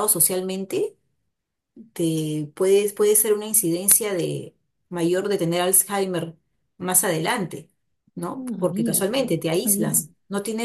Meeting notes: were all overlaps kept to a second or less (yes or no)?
no